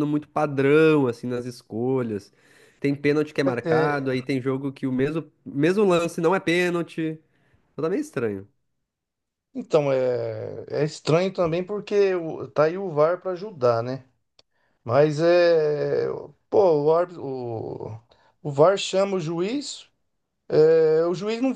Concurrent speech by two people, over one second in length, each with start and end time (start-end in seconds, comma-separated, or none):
none